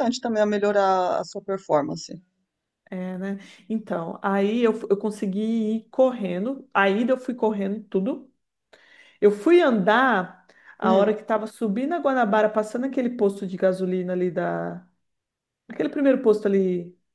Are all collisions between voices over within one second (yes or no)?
yes